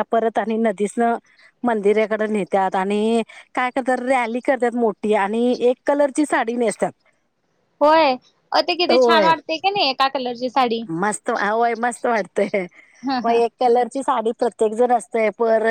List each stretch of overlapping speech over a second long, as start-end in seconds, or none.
none